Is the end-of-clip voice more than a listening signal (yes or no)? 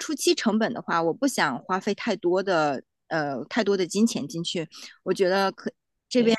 no